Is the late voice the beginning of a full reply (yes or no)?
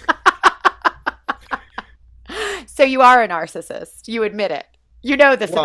yes